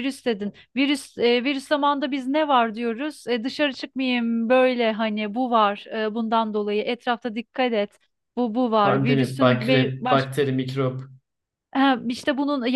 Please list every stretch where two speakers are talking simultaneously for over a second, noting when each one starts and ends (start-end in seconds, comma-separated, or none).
8.8-10.3